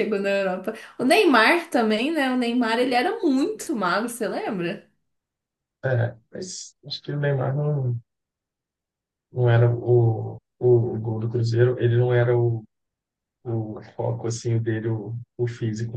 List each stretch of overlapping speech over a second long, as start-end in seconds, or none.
none